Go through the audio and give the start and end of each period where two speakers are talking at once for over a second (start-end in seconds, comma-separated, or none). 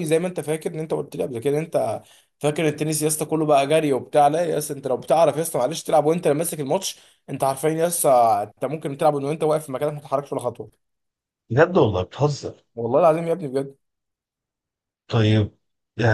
none